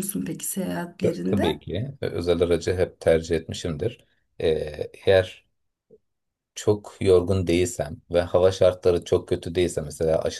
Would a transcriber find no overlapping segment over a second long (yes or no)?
yes